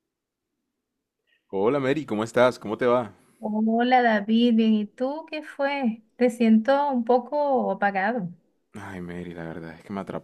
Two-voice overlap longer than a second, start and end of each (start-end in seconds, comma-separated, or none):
none